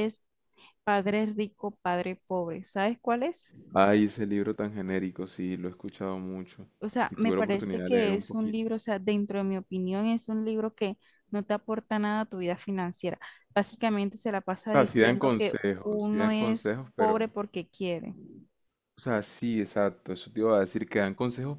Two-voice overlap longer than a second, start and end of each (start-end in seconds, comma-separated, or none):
7.1-8.6, 14.7-17.3